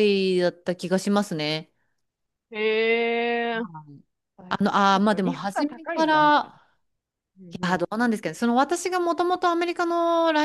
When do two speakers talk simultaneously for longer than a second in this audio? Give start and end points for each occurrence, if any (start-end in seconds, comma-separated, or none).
4.5-6.5